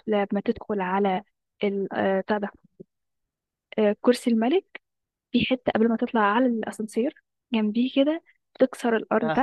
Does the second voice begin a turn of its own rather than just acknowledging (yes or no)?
no